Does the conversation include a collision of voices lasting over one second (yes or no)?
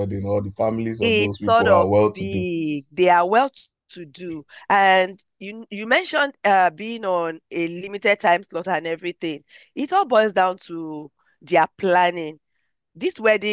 yes